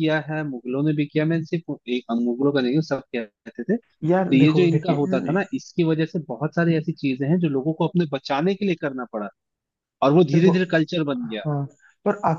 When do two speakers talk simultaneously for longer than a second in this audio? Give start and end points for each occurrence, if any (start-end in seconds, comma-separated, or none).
4.1-5.4